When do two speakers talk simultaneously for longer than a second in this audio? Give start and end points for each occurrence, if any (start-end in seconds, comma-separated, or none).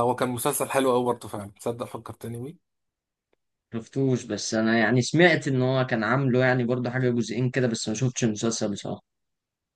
none